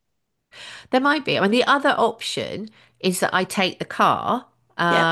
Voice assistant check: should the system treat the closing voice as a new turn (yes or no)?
no